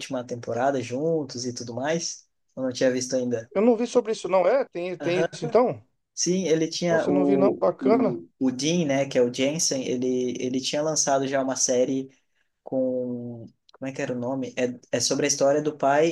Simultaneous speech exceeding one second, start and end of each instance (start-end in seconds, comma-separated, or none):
6.9-8.2